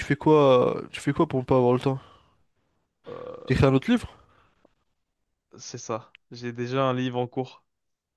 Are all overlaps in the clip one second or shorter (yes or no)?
yes